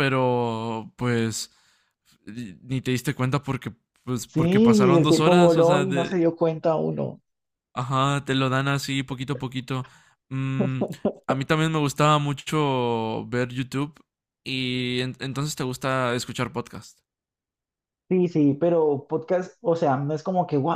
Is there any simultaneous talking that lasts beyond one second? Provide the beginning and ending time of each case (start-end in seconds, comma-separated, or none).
4.3-6.2